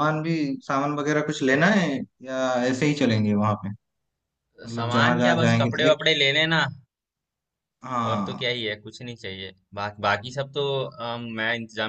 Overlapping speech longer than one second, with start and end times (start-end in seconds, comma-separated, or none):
4.7-6.0